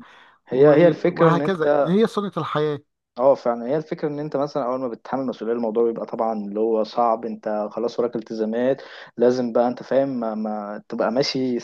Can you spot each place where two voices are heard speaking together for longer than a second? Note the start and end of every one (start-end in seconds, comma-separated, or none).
0.5-1.9